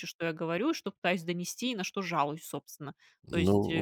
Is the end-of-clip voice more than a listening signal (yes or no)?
yes